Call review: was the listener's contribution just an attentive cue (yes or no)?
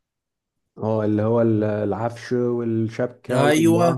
no